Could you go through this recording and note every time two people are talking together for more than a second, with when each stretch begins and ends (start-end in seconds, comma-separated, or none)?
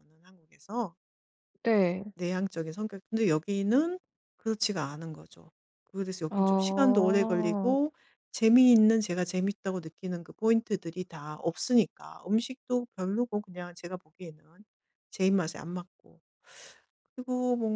6.3-7.8